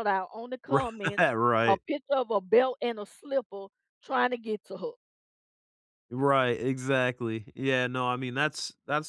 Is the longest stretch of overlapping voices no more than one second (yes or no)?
yes